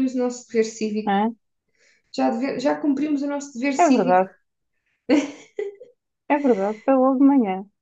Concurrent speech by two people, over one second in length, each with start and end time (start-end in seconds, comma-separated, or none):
none